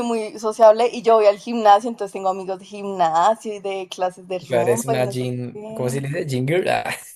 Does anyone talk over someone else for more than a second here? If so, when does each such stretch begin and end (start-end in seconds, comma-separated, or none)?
4.5-6.0